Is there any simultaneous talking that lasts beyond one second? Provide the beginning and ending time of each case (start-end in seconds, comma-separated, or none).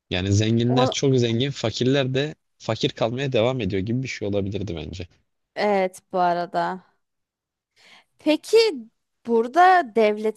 none